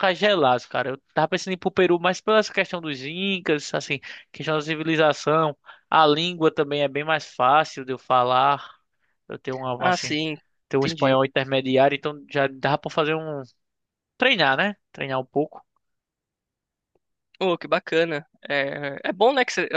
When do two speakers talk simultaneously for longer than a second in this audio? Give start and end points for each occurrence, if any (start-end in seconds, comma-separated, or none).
none